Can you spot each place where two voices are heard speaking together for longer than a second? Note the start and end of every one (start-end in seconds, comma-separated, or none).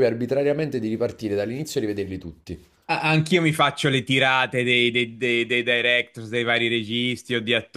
none